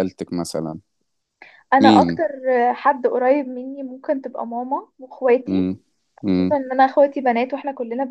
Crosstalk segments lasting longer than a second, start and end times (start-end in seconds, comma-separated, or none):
none